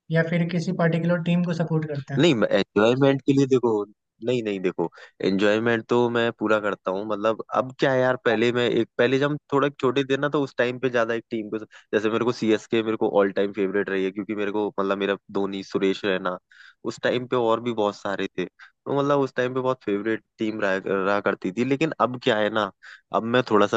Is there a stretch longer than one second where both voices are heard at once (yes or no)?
no